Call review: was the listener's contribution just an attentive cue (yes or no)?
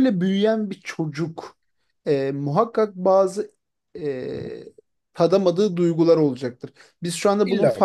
yes